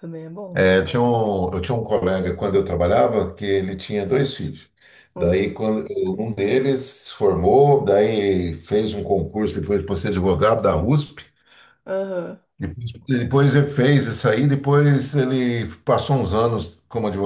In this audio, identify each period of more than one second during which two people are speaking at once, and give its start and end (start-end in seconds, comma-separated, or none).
none